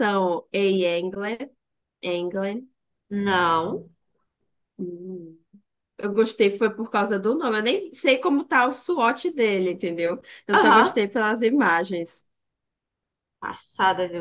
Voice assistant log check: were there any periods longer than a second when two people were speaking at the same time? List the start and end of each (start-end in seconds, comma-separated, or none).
none